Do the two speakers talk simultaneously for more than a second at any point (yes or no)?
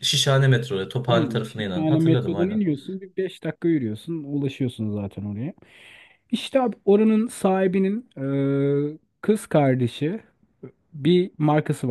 yes